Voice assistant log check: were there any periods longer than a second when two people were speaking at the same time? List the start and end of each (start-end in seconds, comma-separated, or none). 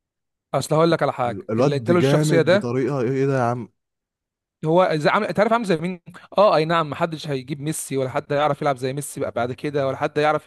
1.2-2.8